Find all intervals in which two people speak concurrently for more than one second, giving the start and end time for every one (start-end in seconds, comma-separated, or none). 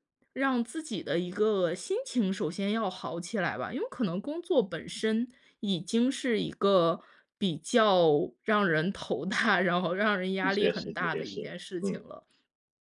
10.4-12.1